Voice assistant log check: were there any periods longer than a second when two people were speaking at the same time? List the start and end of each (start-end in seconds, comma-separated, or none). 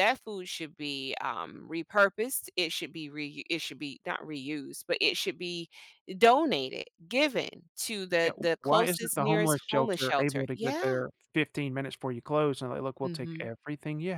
8.2-11.0